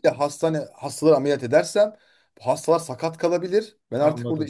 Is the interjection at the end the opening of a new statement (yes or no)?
no